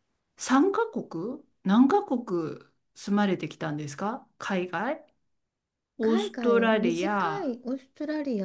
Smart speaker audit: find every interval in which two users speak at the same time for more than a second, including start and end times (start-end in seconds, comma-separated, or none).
6.0-7.5